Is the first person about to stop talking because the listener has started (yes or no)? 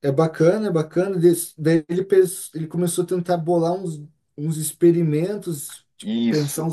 no